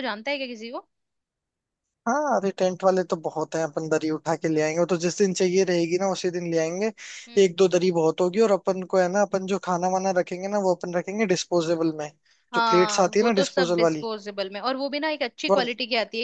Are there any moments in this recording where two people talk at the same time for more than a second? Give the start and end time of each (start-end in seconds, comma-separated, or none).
12.6-14.1